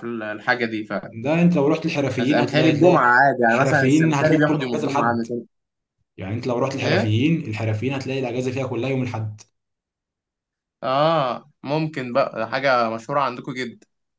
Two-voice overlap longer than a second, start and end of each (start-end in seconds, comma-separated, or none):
2.2-5.2